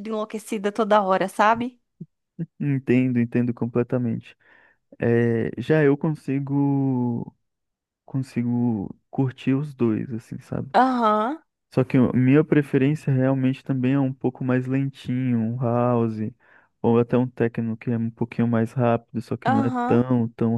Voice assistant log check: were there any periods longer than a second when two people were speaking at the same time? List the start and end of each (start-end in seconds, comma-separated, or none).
none